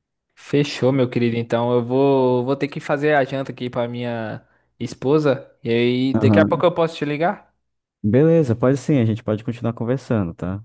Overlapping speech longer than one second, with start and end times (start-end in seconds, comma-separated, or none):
none